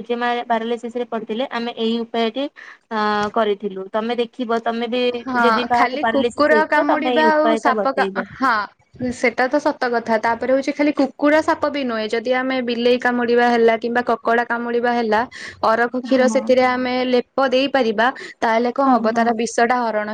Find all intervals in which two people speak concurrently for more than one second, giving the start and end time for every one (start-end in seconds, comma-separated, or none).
5.5-8.2